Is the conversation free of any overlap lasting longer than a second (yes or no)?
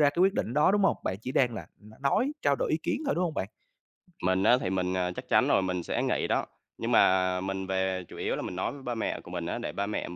yes